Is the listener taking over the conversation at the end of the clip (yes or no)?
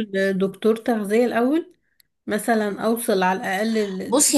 yes